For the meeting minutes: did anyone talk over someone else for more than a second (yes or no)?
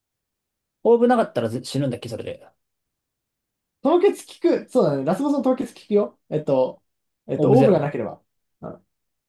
no